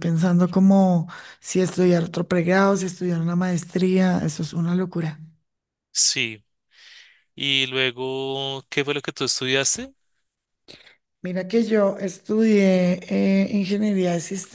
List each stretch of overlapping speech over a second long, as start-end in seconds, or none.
none